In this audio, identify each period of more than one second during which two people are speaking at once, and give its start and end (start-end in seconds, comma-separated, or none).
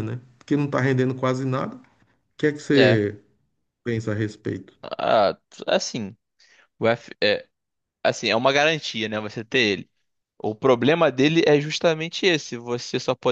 none